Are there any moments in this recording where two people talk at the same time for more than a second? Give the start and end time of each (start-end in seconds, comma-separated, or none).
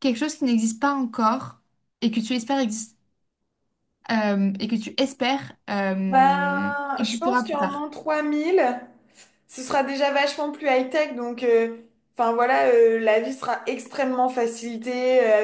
6.1-7.9